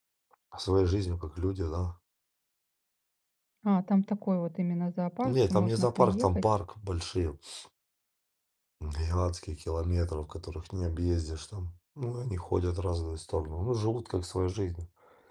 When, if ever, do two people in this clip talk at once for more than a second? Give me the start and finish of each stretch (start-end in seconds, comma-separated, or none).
5.2-6.4